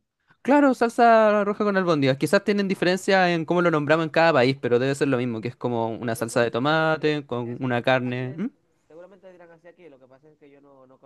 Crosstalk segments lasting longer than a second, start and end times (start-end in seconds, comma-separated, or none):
5.9-8.4